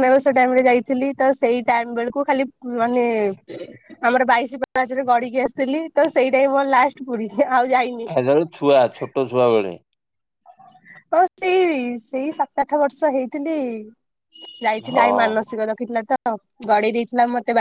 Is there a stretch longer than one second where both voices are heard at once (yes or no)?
no